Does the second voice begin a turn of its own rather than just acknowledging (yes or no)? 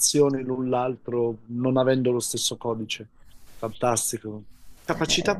no